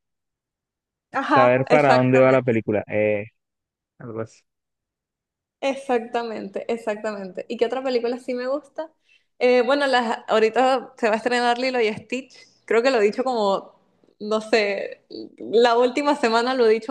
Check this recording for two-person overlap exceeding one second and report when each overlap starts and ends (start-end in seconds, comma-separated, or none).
1.2-2.6